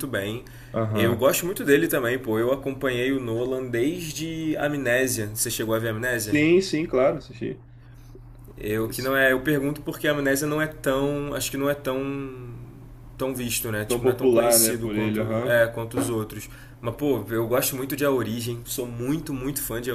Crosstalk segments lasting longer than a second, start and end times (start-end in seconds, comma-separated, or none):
13.8-15.6